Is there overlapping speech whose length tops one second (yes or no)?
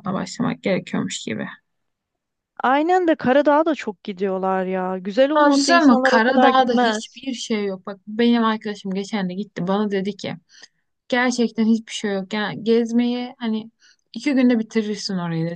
yes